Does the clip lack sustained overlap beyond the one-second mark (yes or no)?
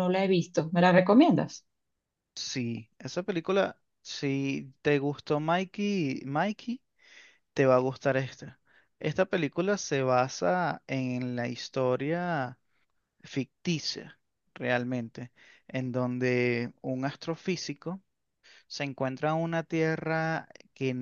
yes